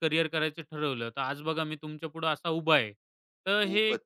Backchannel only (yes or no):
yes